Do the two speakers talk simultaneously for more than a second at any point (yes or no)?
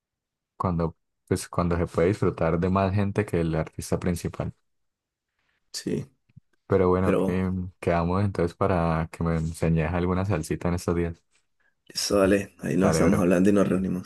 no